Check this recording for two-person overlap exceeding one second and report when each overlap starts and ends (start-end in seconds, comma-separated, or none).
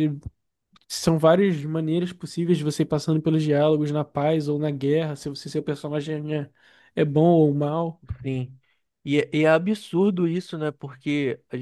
none